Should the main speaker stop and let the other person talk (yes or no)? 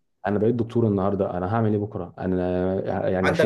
yes